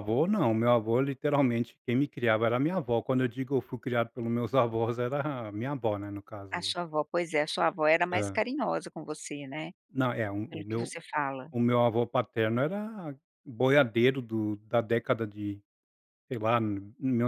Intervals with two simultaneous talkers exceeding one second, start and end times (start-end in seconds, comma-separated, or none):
none